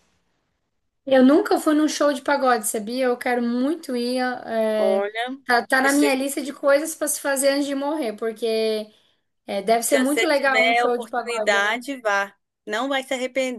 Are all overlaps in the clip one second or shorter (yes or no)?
no